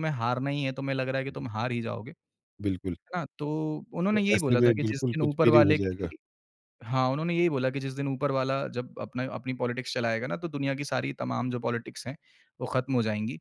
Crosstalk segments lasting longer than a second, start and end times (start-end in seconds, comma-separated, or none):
4.1-6.1